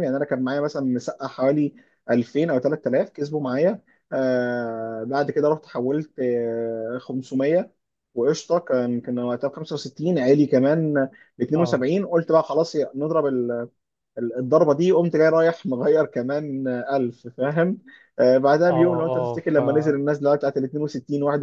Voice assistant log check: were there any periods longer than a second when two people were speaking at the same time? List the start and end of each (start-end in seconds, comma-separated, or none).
18.7-20.0